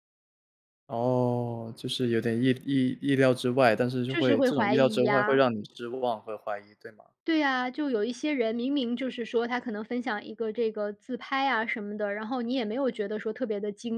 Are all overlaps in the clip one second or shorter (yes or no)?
no